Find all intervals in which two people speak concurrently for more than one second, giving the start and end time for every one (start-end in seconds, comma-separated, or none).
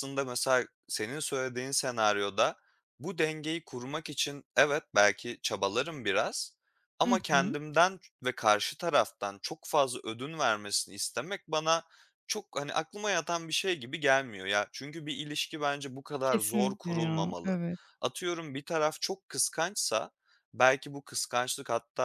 16.2-17.6